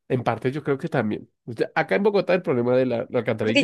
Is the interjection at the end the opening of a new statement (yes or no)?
yes